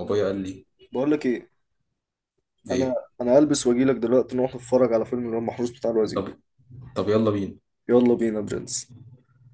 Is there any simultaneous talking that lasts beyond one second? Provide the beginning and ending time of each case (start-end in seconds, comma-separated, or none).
none